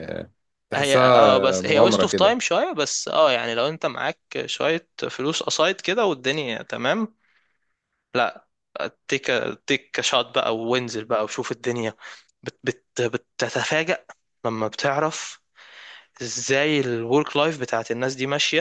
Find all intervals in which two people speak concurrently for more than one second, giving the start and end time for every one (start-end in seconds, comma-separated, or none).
0.7-2.4